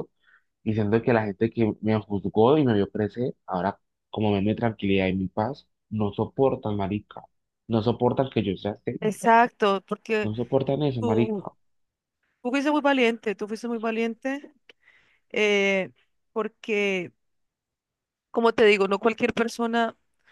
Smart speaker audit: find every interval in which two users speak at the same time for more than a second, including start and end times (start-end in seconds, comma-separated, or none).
none